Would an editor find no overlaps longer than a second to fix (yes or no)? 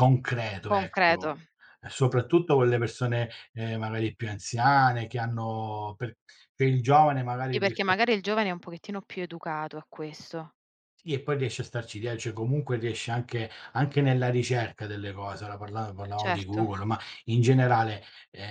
yes